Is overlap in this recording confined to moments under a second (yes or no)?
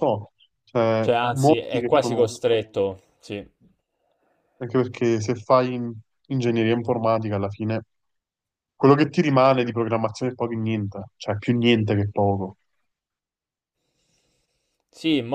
no